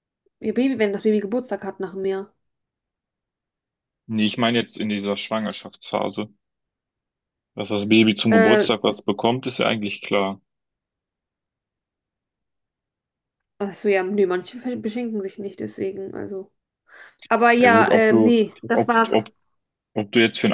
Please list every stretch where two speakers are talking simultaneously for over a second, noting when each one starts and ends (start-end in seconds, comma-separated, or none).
17.6-19.2